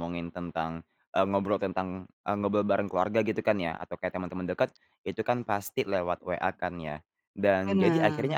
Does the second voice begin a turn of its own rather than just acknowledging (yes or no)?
no